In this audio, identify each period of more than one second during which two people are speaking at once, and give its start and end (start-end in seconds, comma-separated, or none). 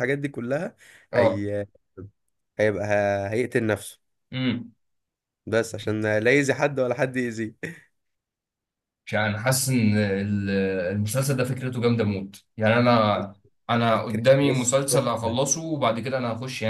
13.9-15.4